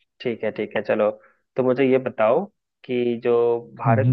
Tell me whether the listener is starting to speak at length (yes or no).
no